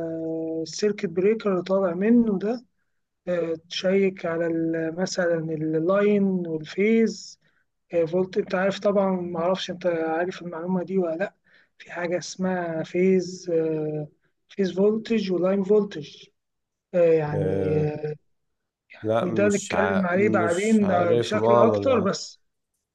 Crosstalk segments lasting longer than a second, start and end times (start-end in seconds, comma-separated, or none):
19.2-22.1